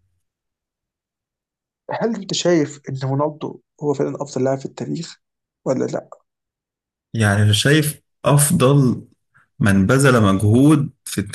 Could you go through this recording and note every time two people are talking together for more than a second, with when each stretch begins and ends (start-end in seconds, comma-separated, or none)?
none